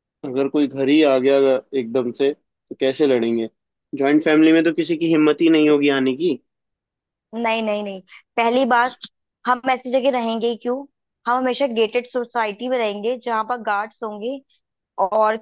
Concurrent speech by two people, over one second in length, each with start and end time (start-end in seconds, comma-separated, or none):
none